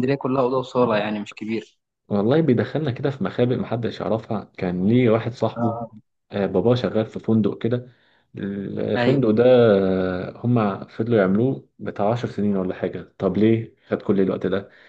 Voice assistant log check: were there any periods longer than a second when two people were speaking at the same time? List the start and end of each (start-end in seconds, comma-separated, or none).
none